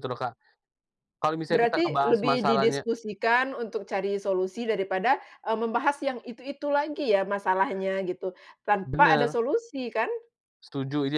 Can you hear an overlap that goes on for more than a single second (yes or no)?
yes